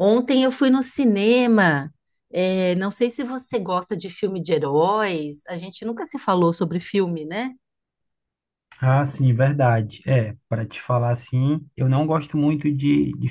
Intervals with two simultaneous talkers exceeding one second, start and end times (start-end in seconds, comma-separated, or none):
none